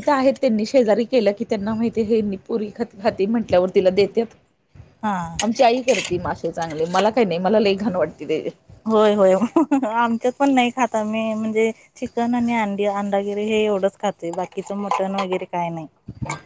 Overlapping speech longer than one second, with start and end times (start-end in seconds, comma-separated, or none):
none